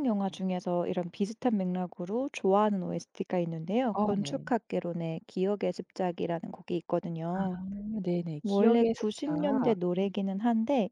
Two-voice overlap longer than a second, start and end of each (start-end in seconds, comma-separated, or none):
8.4-9.8